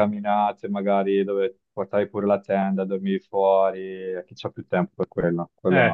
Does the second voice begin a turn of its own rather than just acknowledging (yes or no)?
yes